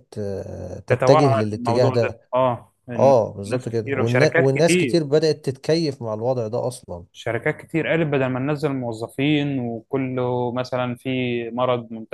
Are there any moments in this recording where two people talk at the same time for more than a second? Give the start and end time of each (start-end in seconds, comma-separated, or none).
0.9-2.2, 3.0-5.0